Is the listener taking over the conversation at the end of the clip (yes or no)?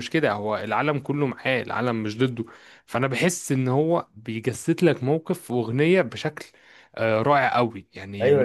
yes